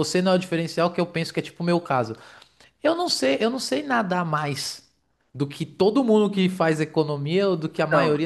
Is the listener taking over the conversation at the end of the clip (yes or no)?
no